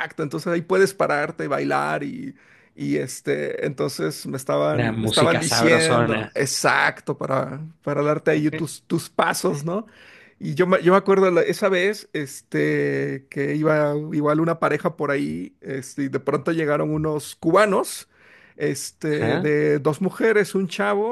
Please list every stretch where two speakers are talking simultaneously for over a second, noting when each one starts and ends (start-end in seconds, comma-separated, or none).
4.7-6.3